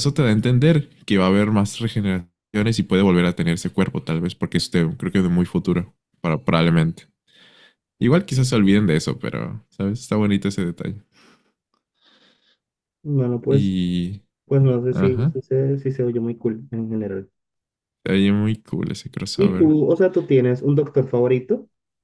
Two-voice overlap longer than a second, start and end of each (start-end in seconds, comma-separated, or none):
none